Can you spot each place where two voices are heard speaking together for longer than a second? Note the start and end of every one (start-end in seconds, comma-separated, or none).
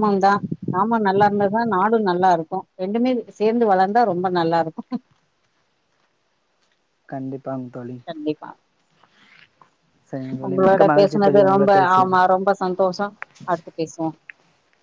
10.5-12.2